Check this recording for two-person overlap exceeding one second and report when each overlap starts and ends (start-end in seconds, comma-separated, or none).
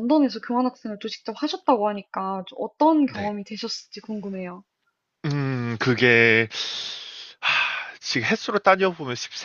none